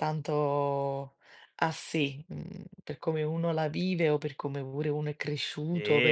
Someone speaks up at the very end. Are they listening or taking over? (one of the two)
taking over